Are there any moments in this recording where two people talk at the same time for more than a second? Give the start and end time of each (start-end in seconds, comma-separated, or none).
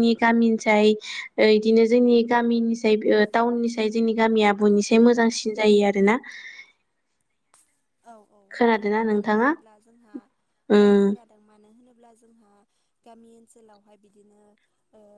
none